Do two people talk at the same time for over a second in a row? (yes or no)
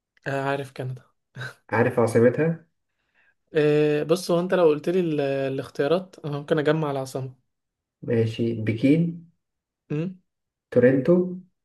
no